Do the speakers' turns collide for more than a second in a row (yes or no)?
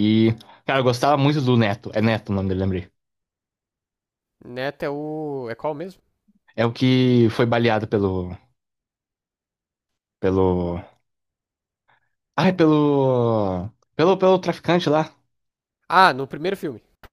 no